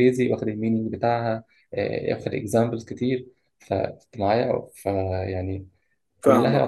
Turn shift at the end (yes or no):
no